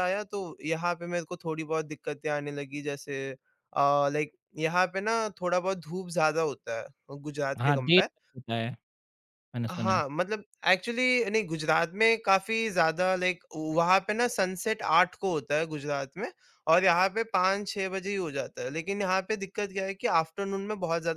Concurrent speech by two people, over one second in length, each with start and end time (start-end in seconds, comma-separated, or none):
none